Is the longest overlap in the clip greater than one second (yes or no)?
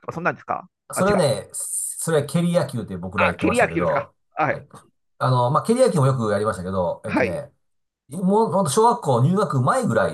yes